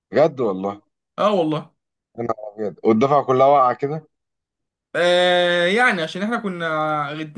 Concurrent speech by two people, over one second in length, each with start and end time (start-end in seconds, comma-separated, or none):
none